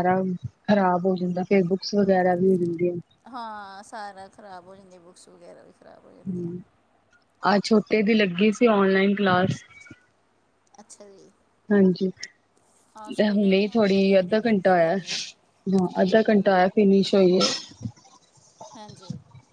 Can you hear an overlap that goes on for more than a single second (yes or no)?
yes